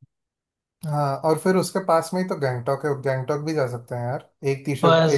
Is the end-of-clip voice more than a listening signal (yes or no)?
yes